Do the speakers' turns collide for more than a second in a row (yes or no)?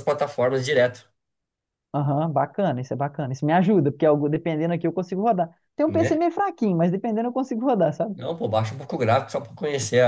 no